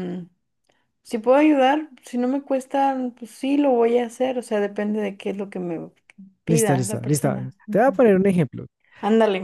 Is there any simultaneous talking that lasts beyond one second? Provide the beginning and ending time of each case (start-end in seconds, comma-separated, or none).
6.5-8.0